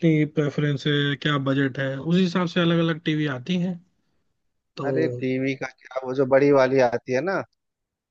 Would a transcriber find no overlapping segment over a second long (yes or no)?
yes